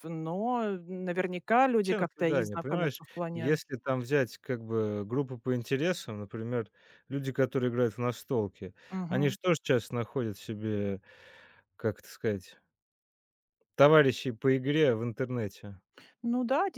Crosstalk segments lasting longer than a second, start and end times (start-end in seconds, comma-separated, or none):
1.8-3.6